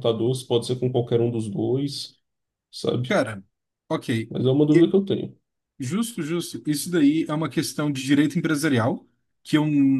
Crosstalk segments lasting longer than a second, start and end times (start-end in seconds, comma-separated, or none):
none